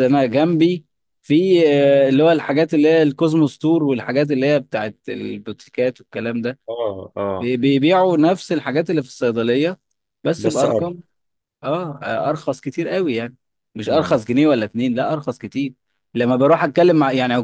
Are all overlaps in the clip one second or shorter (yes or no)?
yes